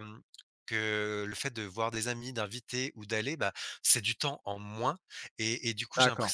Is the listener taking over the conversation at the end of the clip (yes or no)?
no